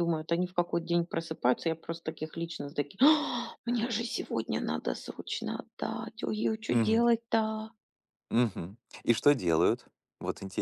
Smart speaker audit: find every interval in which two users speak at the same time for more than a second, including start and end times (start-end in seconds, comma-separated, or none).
none